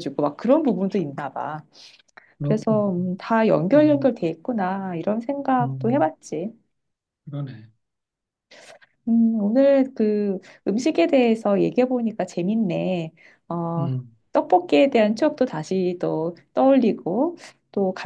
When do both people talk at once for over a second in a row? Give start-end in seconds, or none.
none